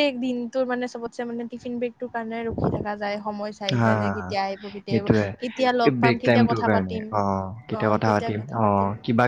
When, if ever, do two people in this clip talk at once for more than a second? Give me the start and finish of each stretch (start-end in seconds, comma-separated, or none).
4.9-7.0